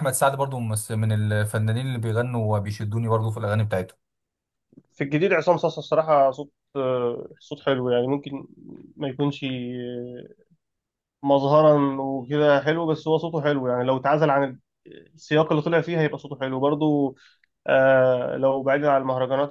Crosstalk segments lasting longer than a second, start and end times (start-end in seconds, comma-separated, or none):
none